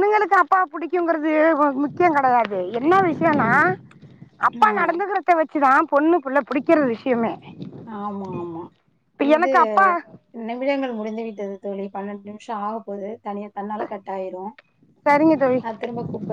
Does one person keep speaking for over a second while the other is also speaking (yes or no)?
no